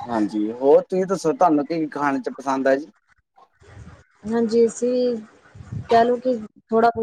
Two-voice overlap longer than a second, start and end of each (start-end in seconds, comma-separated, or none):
none